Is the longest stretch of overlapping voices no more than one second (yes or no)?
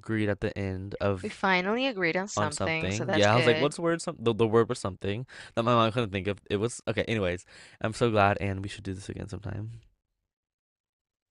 no